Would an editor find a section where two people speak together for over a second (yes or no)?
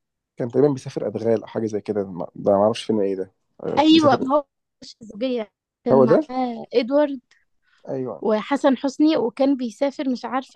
no